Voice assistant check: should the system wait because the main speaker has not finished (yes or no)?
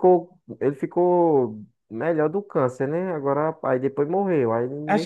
no